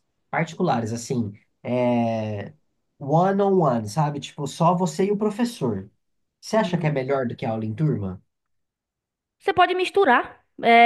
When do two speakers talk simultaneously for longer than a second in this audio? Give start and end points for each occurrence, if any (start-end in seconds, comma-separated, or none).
none